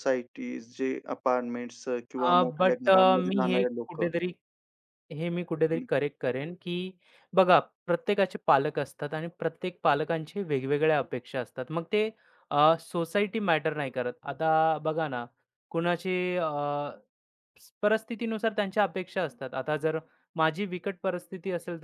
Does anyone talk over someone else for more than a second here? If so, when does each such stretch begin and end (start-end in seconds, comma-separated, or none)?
2.2-4.1